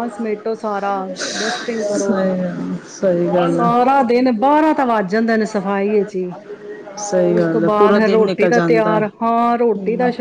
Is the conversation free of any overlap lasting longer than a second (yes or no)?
no